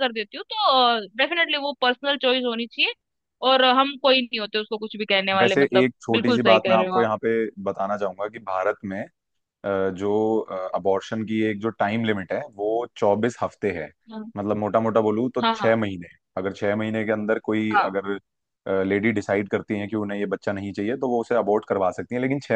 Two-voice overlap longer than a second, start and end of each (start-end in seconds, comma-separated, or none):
5.4-7.1